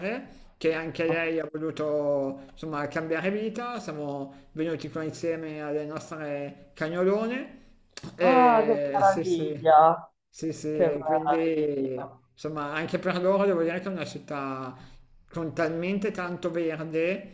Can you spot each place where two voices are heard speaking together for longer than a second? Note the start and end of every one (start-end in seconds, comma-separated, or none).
8.2-9.8, 10.7-12.2